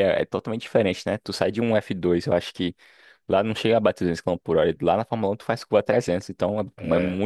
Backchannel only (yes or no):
yes